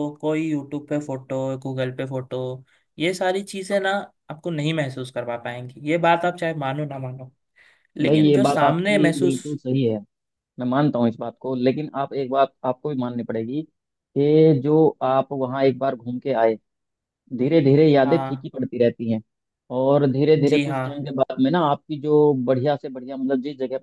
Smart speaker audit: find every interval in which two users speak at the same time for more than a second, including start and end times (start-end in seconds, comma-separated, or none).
8.1-9.4